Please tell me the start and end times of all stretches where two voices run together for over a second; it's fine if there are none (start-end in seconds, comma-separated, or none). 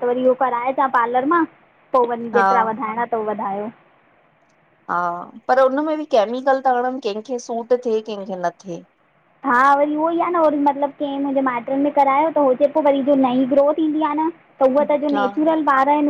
none